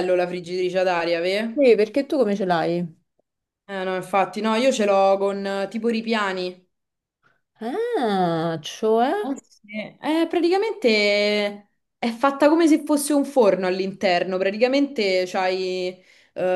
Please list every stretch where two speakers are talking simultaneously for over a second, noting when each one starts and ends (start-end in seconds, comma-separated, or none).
none